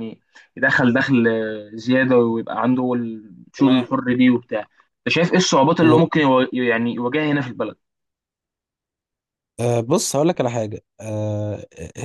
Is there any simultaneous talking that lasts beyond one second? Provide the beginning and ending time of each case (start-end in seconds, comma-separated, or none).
none